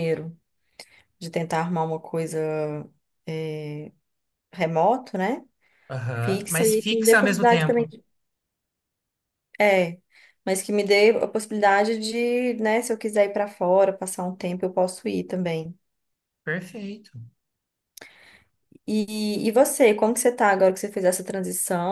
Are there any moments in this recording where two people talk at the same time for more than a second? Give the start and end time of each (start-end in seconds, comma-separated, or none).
6.2-7.9